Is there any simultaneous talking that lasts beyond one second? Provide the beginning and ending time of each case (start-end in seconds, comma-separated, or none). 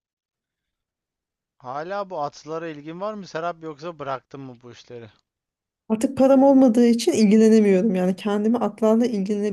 none